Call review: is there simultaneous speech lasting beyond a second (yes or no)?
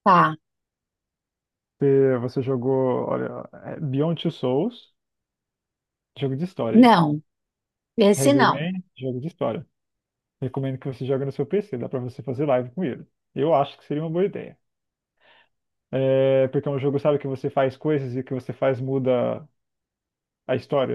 no